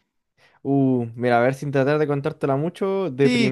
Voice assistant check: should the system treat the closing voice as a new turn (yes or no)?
yes